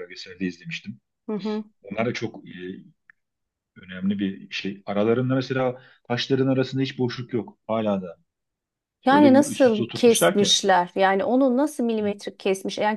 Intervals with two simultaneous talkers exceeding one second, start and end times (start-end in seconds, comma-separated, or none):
9.1-10.5